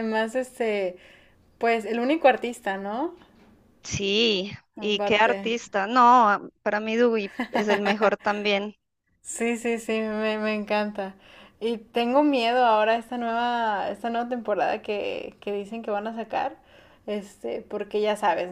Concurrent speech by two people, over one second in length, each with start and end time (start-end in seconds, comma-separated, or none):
none